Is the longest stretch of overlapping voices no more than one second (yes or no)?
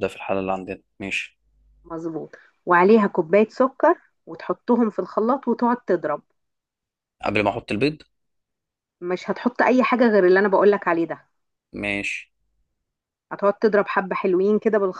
yes